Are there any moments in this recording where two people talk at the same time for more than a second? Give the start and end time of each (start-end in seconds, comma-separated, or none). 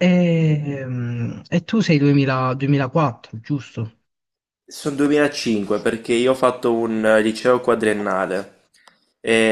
none